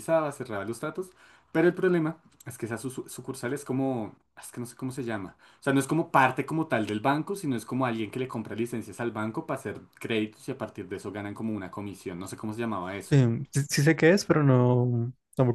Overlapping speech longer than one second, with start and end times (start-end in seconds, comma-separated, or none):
none